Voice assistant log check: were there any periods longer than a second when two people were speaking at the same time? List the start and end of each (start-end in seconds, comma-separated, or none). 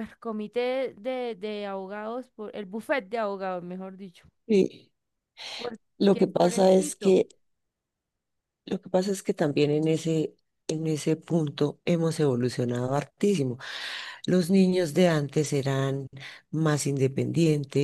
6.0-7.2